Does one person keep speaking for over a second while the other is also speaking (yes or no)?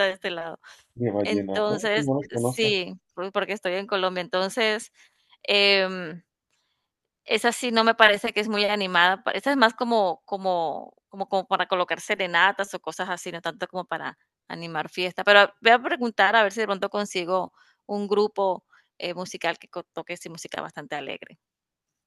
yes